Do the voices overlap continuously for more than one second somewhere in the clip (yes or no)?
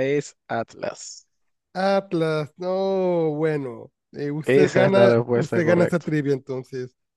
yes